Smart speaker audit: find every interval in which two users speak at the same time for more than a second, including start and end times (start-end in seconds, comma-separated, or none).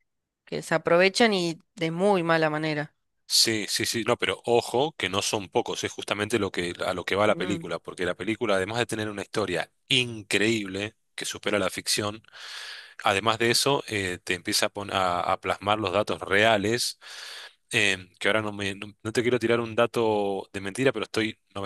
none